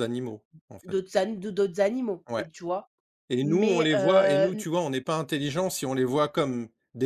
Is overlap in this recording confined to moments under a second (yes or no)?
no